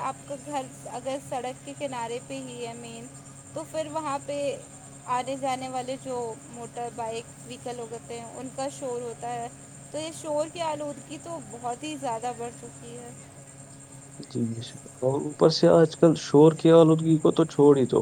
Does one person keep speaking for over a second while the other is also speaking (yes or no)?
no